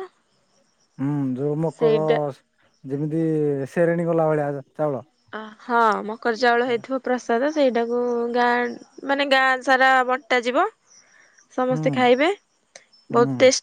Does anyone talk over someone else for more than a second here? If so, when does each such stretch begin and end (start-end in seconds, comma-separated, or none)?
none